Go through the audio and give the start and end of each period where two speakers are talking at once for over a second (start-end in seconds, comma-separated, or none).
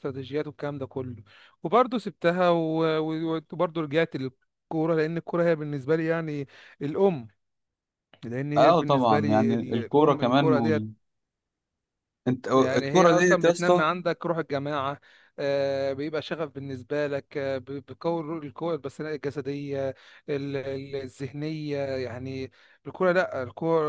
8.6-10.9, 12.5-13.9